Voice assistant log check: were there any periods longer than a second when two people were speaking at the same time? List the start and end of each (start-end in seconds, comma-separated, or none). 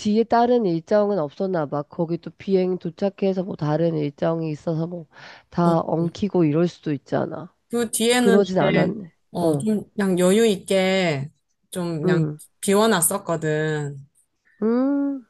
8.2-9.7